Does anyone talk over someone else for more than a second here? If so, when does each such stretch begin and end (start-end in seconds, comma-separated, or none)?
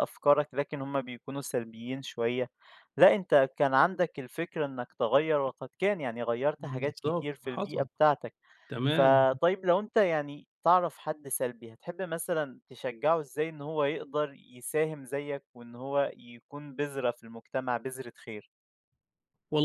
6.6-7.9